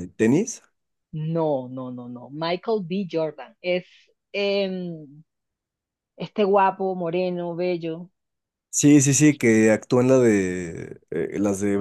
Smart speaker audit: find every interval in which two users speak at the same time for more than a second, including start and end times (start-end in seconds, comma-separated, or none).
none